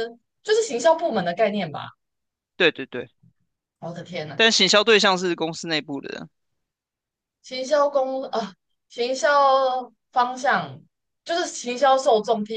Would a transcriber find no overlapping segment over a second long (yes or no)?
yes